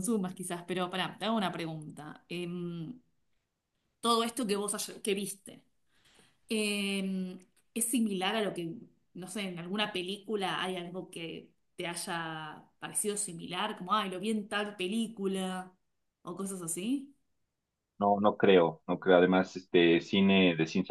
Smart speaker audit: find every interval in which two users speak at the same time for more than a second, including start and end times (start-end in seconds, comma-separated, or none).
none